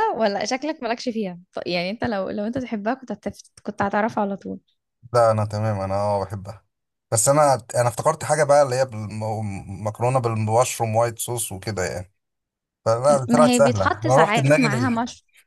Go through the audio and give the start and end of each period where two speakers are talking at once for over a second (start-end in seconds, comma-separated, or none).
13.3-14.9